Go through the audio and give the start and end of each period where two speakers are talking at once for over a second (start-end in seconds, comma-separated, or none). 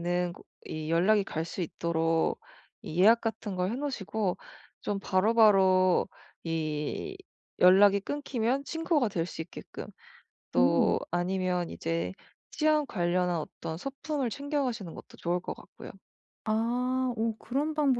none